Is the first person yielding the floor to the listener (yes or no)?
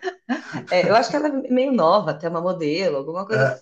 yes